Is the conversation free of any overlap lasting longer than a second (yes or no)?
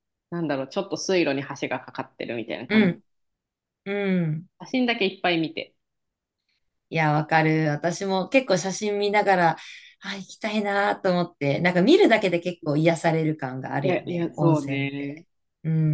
no